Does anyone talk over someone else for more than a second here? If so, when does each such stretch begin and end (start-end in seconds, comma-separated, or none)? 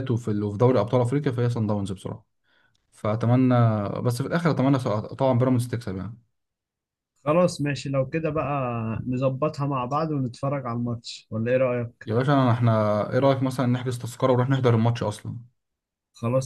none